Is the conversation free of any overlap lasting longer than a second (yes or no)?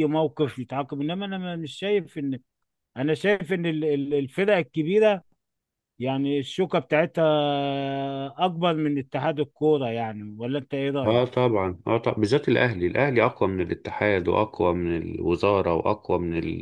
yes